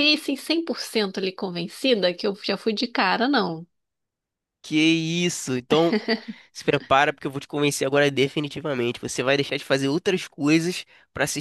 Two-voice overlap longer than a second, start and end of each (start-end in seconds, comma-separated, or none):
none